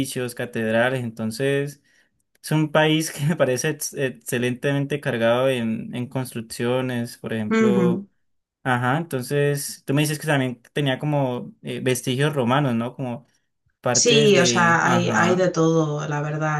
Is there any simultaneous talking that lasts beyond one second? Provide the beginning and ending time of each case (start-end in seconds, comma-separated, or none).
14.0-15.5